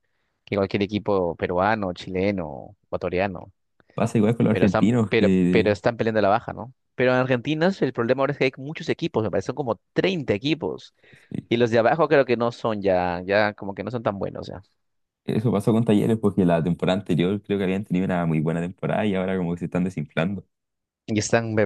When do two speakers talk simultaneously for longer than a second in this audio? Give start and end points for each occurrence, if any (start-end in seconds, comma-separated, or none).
4.5-5.8